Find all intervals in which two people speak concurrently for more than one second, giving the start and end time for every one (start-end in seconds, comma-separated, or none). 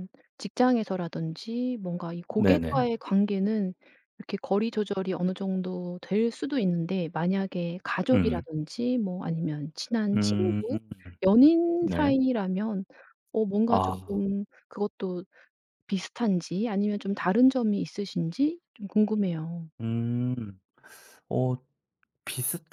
none